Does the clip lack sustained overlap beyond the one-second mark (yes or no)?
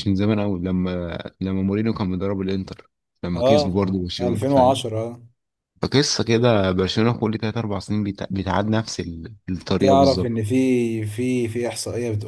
no